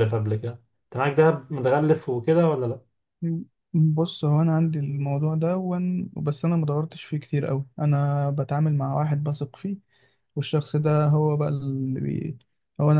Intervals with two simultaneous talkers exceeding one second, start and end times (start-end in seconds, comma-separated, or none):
none